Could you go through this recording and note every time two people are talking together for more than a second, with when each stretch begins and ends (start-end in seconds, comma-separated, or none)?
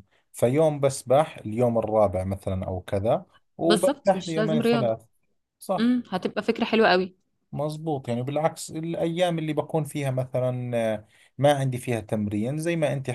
3.6-4.9